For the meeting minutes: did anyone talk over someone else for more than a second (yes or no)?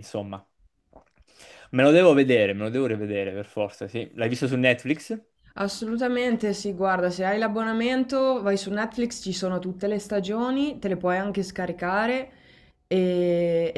no